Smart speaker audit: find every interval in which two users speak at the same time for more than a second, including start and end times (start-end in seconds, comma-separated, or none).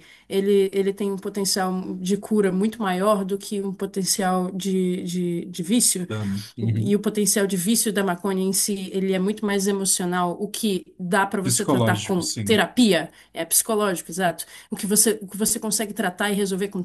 11.4-12.6